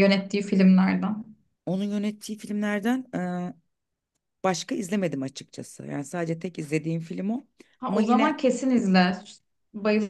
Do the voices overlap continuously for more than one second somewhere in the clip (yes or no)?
no